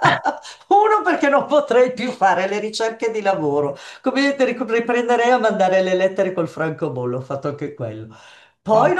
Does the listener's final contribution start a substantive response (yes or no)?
no